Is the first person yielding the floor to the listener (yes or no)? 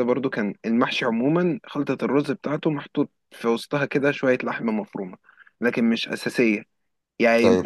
no